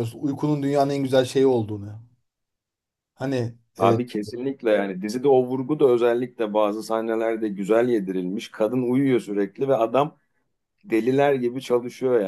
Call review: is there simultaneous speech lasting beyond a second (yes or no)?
no